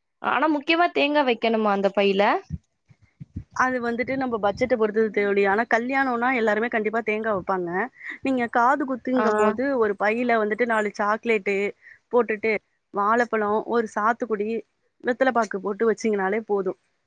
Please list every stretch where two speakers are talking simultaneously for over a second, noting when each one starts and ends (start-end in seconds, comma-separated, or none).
none